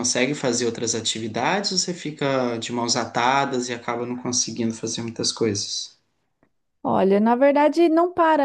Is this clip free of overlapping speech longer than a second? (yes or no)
yes